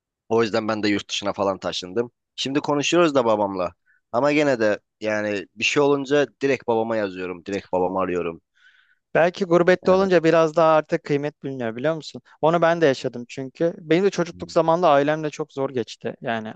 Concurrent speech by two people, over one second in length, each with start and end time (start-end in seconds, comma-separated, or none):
none